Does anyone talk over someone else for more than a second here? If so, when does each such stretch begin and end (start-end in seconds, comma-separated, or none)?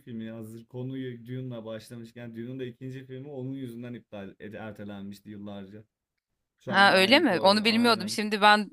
6.7-8.2